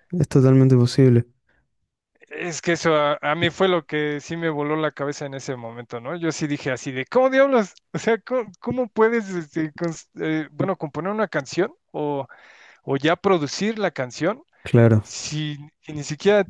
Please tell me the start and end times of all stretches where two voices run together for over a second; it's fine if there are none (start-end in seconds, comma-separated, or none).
none